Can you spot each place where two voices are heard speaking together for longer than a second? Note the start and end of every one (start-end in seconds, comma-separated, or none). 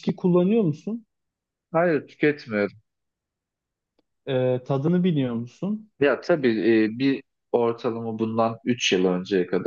none